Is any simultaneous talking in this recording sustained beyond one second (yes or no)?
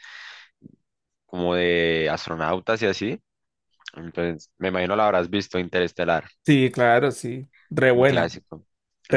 no